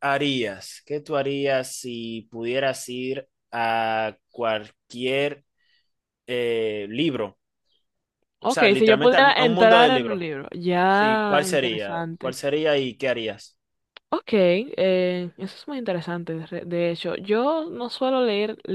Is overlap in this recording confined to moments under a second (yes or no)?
no